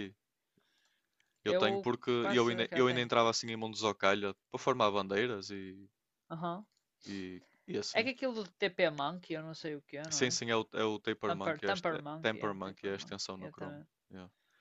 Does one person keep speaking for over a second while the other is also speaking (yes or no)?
yes